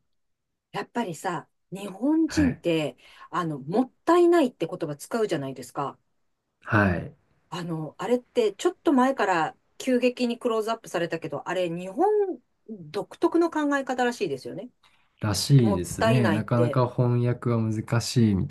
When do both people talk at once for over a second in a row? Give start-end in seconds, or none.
15.5-16.8